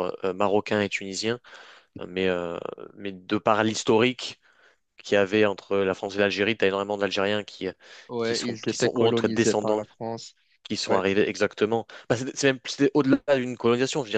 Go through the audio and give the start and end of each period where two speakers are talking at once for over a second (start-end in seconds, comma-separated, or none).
8.2-9.8